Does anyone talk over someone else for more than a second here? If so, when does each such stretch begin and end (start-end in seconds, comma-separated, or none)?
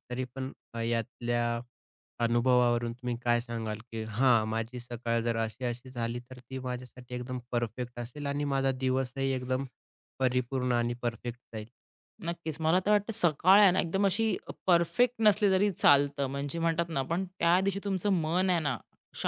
none